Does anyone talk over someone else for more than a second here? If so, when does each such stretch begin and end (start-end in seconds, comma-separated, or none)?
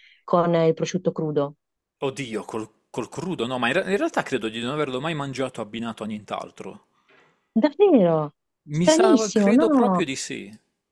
8.8-10.1